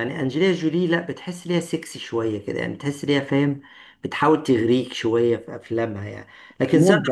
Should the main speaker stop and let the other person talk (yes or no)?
yes